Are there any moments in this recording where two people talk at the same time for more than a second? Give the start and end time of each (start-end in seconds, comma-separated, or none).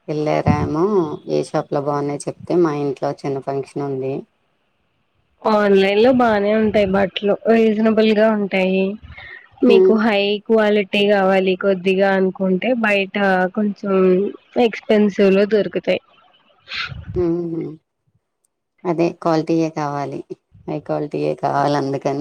none